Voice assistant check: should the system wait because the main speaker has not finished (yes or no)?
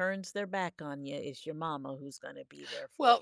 no